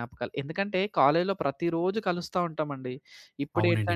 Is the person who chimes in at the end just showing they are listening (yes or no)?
yes